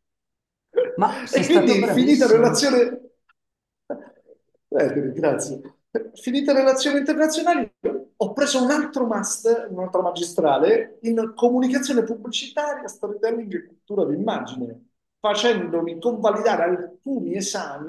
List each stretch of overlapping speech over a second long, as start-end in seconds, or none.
1.3-2.8